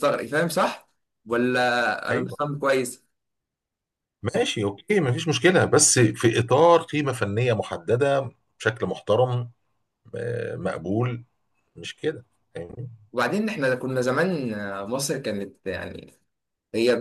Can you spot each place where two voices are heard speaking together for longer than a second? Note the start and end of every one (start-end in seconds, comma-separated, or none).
none